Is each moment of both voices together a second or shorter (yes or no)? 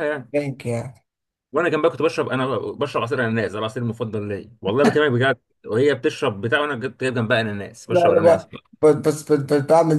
yes